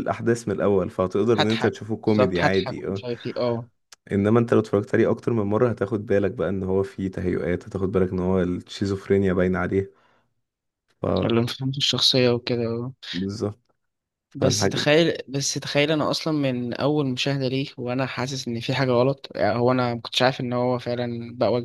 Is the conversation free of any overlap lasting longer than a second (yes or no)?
no